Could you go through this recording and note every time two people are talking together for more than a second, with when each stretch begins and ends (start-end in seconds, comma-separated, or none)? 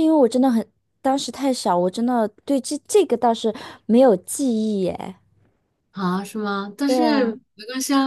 none